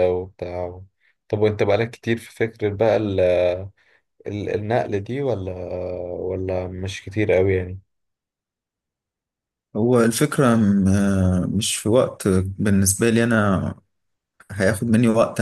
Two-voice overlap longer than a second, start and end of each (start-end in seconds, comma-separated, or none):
none